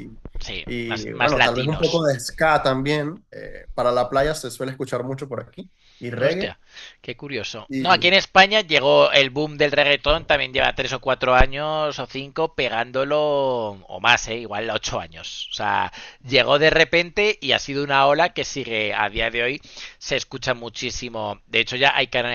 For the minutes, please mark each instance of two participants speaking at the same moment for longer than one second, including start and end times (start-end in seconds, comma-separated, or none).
0.7-2.0